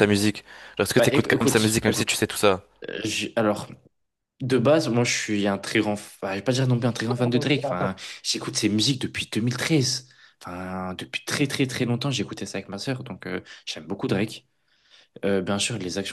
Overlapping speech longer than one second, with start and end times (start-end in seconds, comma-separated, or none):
1.0-2.2